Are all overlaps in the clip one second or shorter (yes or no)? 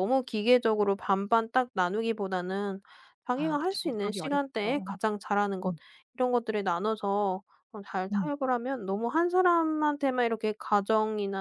no